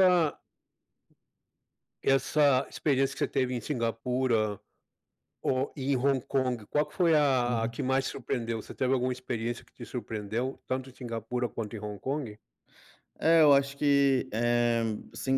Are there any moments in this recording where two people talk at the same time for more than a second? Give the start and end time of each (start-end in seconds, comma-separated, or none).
none